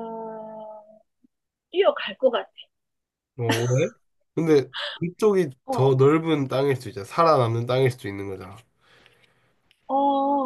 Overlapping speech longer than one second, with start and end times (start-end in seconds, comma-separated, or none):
none